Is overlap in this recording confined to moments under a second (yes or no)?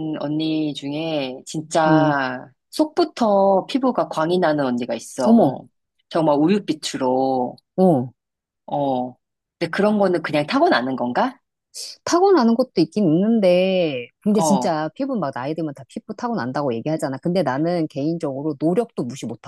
yes